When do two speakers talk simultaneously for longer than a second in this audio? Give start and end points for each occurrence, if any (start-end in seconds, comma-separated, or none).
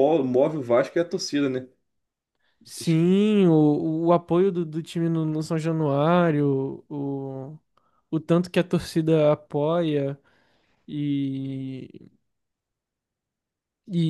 none